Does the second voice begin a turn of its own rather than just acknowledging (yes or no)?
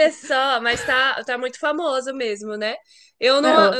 no